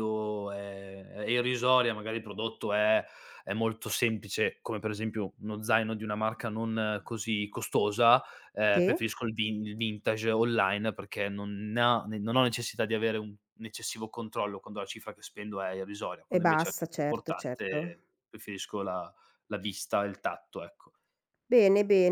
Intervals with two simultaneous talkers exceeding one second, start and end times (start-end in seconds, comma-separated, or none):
16.3-17.8